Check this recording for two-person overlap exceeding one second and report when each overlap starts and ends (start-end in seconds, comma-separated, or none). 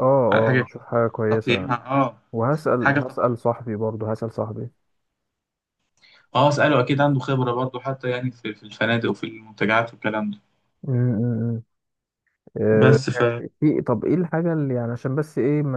none